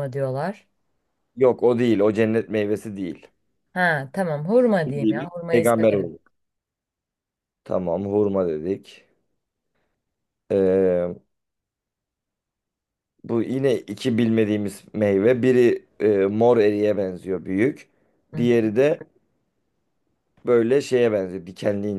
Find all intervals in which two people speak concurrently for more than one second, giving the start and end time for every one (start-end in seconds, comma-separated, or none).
4.8-6.1